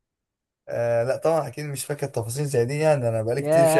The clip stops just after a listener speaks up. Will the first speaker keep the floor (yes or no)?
no